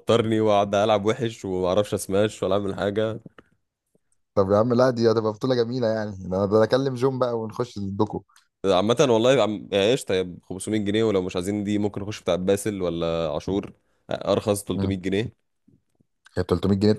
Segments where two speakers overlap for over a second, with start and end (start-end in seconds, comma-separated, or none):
none